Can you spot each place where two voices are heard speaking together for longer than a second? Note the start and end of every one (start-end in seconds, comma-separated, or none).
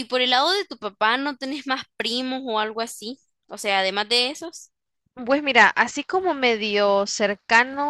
none